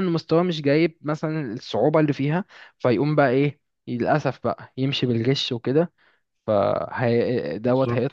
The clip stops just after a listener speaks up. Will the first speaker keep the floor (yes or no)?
yes